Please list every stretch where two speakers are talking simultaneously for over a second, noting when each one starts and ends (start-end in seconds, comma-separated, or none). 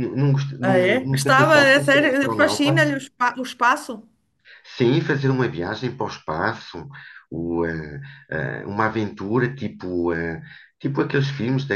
0.6-2.9